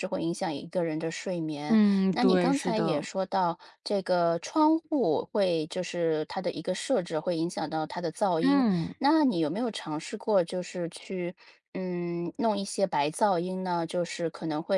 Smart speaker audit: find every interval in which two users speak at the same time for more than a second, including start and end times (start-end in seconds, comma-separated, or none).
1.7-3.1